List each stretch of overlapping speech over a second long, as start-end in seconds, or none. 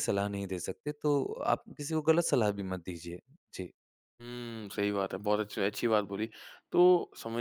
none